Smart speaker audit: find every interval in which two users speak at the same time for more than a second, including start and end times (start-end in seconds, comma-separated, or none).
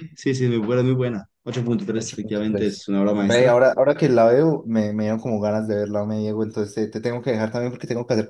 1.9-3.5